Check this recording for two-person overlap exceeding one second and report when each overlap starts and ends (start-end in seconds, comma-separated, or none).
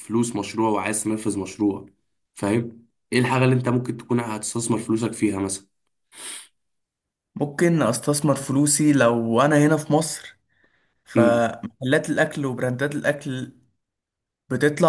none